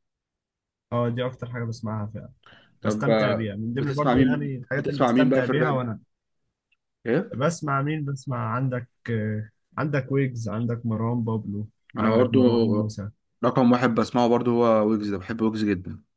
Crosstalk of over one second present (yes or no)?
yes